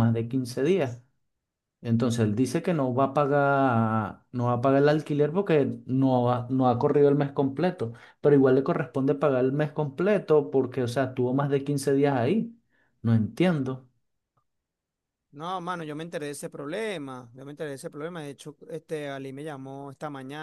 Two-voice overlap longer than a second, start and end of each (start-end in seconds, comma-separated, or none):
none